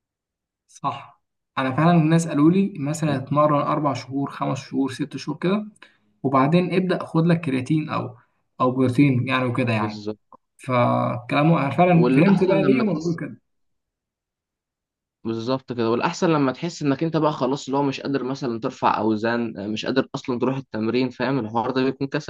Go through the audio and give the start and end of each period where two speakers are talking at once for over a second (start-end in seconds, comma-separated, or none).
11.9-13.2